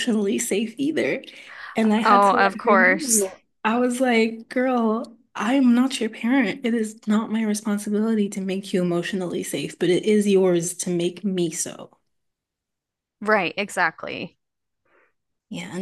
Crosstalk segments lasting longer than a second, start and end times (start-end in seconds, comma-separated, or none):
2.0-3.3